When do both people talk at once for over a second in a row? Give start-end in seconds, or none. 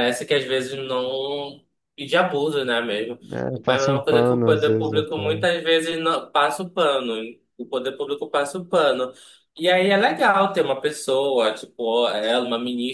3.7-5.2